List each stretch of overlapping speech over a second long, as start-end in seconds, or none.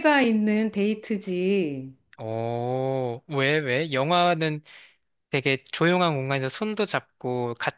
none